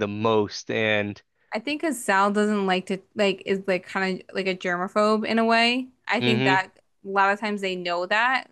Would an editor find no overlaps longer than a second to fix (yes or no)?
yes